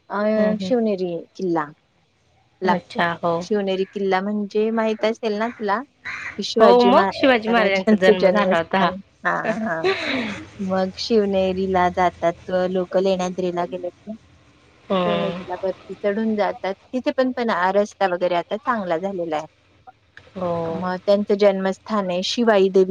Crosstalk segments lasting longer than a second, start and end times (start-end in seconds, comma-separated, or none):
6.6-8.9